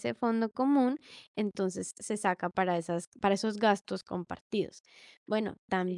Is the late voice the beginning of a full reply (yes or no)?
no